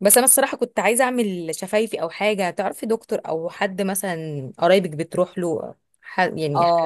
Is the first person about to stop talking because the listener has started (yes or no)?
yes